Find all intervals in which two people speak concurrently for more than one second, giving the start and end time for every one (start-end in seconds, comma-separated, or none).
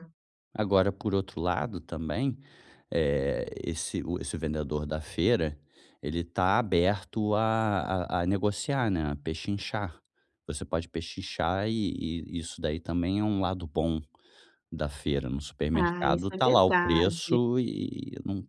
15.7-17.4